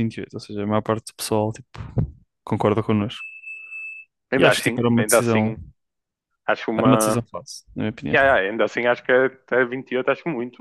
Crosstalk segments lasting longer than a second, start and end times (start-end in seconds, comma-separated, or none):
4.4-5.6